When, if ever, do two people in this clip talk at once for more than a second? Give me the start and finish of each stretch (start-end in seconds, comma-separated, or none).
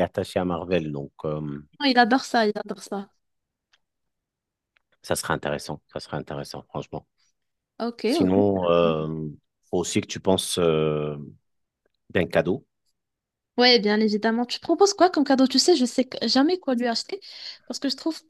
none